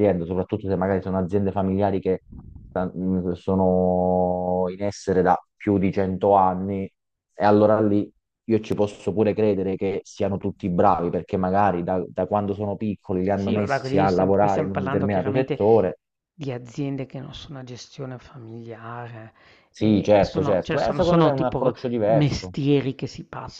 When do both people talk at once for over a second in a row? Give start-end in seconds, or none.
13.3-15.6, 19.8-22.5